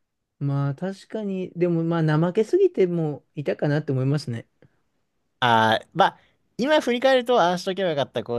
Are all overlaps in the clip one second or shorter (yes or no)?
yes